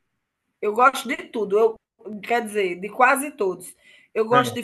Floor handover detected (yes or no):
no